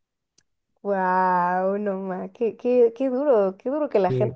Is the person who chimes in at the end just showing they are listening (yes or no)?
no